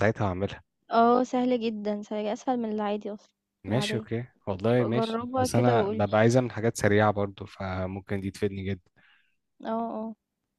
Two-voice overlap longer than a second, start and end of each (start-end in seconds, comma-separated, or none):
4.7-6.2